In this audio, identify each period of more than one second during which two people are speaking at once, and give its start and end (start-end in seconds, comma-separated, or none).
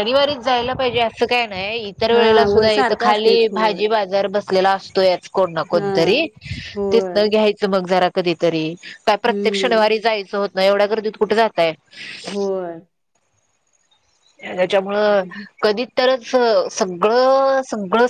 2.1-3.8